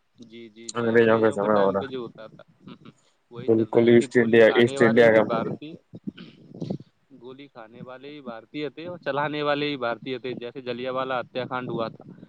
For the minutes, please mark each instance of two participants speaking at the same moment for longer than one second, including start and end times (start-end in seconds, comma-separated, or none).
3.5-5.5